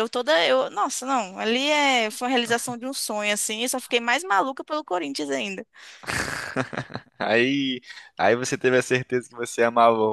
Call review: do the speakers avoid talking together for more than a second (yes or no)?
yes